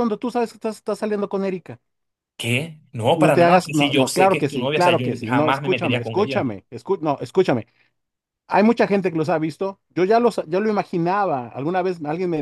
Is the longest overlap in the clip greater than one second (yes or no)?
yes